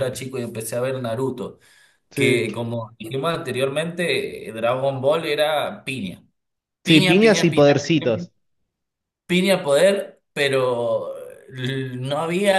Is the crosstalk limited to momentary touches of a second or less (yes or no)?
no